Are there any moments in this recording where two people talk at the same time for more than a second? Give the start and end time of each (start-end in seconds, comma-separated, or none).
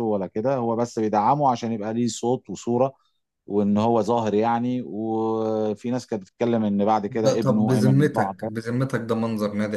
7.1-8.5